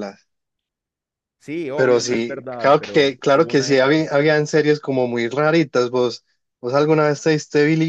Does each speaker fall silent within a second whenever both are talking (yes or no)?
no